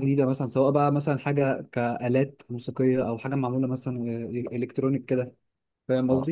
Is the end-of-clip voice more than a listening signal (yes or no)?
yes